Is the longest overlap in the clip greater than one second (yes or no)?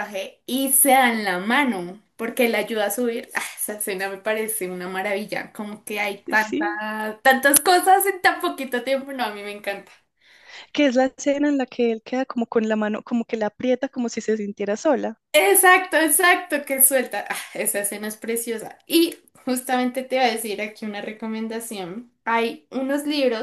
no